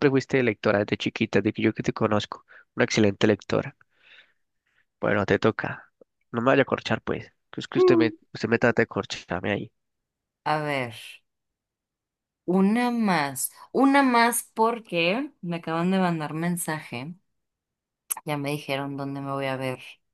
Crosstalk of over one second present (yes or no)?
no